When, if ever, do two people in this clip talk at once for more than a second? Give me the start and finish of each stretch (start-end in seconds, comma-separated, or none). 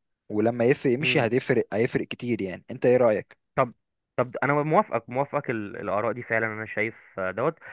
none